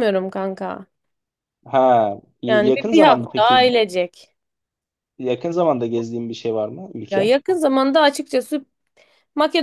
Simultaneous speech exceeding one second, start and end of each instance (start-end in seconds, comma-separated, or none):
2.5-3.7